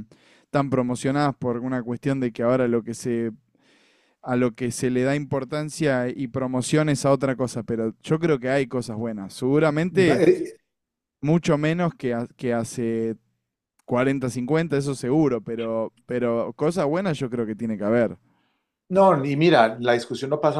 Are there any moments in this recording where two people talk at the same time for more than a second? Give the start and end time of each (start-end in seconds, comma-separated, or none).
none